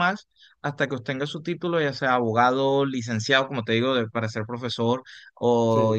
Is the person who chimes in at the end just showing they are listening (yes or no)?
yes